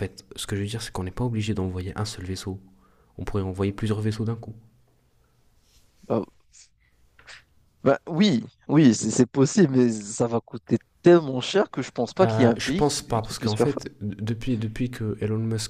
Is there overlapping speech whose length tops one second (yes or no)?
yes